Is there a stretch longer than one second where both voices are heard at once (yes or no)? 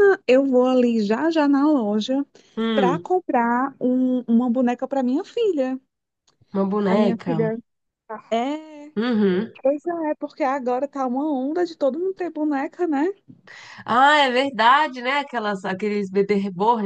no